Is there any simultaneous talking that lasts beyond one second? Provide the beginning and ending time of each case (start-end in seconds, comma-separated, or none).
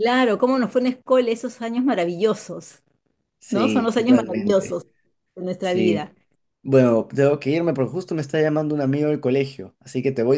3.5-4.8